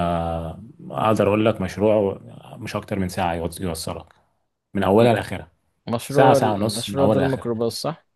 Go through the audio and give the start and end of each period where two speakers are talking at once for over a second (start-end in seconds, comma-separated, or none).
6.1-7.6